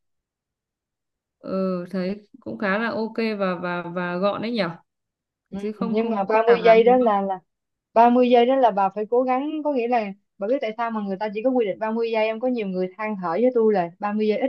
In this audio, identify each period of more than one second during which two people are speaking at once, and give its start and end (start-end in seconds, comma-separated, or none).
5.6-7.2